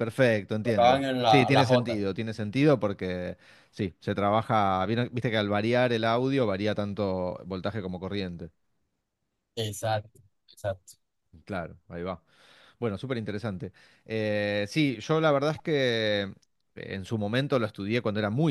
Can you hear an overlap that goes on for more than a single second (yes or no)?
yes